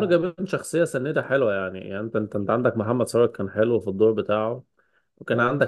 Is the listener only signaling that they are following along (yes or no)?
yes